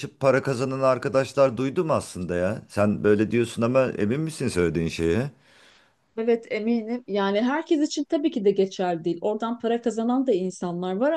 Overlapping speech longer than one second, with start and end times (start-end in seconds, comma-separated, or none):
none